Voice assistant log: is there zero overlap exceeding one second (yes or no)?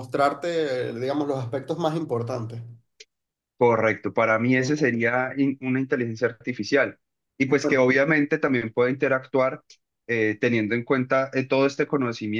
yes